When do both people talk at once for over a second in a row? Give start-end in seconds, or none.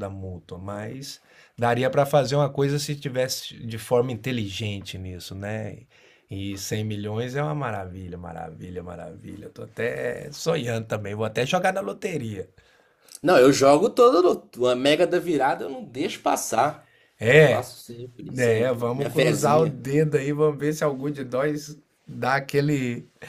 18.4-19.8